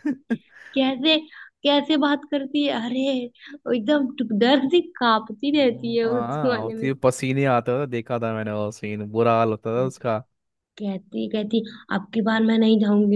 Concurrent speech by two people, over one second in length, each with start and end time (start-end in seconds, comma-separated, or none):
5.5-6.9